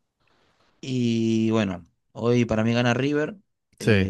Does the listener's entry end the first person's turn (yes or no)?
no